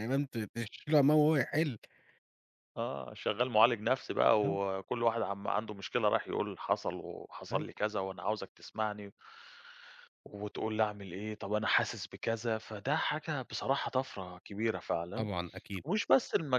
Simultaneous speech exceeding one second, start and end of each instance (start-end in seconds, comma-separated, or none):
none